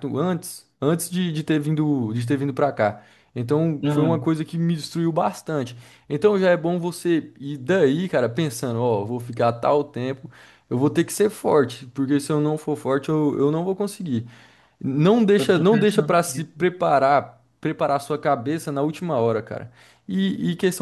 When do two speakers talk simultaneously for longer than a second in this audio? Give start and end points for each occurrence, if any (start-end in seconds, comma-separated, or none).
15.4-16.7